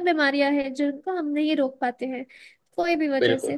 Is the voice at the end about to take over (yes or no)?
no